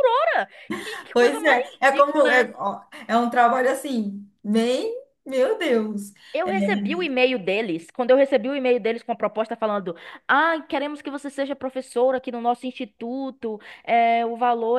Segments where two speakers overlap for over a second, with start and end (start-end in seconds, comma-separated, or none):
1.1-2.6